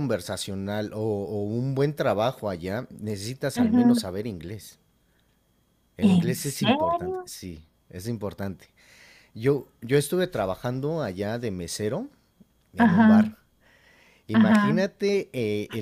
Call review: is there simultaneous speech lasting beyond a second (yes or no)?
yes